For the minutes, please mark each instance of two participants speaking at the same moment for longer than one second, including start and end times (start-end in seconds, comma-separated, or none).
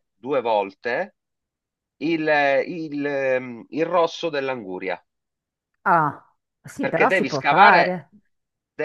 6.8-8.1